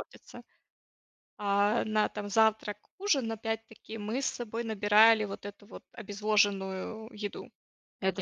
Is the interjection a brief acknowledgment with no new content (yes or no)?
no